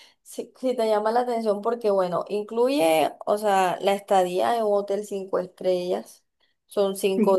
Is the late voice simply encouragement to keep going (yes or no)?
yes